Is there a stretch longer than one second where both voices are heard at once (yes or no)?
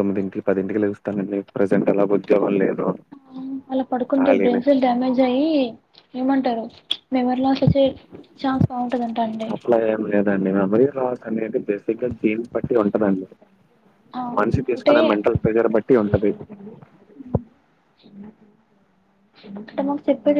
no